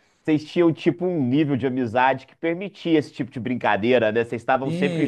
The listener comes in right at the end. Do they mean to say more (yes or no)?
yes